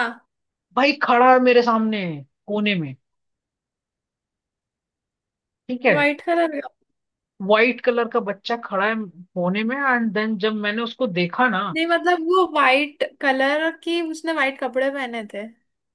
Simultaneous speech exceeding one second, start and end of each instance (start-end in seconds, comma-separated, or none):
none